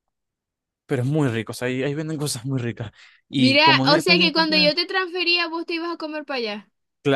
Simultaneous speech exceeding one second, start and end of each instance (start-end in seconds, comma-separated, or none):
3.4-4.7